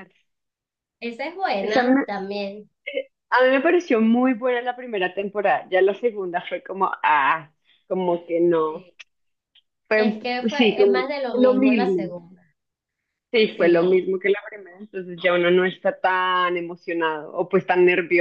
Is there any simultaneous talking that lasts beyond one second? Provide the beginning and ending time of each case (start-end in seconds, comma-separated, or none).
9.9-12.2